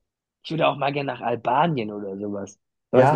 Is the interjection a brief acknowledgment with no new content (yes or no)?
no